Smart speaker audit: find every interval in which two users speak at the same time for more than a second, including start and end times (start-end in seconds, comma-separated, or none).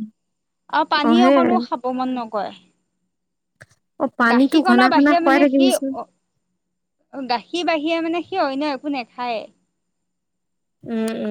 4.3-5.9